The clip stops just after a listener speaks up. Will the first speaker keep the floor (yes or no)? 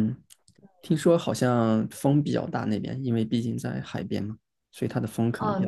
no